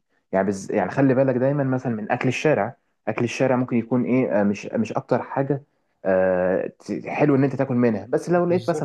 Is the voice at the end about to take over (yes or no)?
no